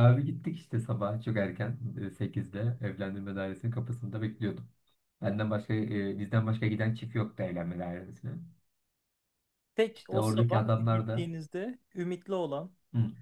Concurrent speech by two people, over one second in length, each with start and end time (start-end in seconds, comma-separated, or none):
9.9-11.3